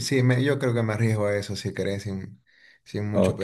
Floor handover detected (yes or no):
yes